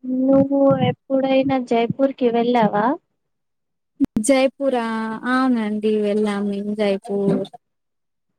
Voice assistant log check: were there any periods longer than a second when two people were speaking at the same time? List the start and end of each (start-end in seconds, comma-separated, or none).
none